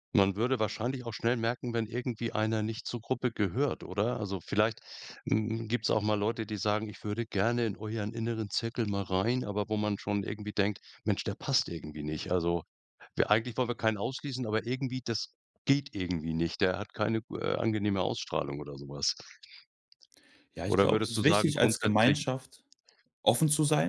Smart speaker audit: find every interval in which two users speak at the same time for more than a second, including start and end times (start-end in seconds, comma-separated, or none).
20.7-22.2